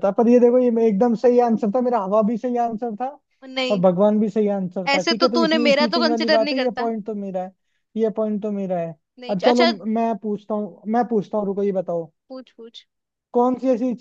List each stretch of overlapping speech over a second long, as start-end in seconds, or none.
4.9-6.9